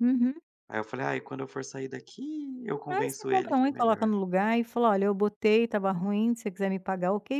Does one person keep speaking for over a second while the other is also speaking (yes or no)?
yes